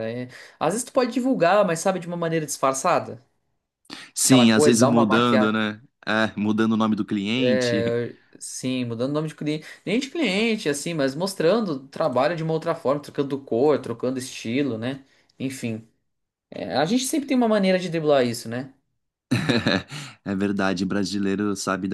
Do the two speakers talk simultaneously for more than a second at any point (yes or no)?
yes